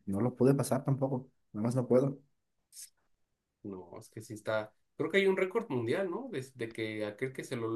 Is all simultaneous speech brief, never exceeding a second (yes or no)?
yes